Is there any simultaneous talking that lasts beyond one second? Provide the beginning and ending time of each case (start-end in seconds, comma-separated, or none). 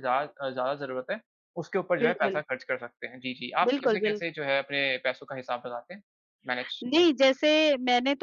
none